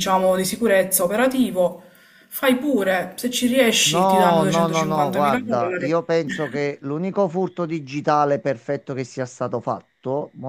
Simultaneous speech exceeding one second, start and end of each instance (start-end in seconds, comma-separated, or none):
3.9-6.0